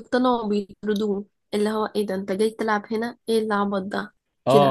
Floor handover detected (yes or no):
yes